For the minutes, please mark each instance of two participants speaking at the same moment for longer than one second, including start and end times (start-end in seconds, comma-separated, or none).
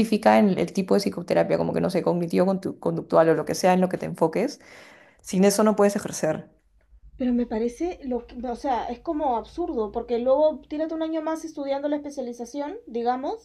none